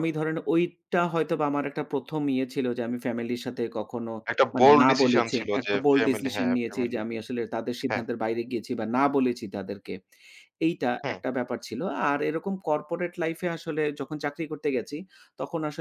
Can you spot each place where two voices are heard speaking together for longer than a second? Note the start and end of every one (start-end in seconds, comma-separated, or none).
4.5-7.0